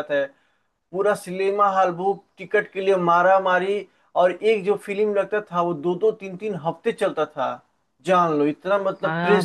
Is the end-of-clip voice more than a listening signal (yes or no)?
yes